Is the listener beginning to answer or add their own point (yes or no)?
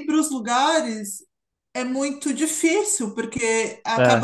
no